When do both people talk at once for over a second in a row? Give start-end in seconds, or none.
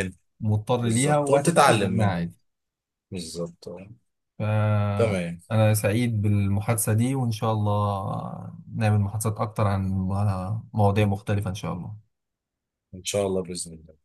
0.8-2.1